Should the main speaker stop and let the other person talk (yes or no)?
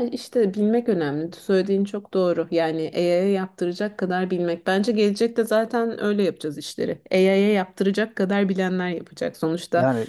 no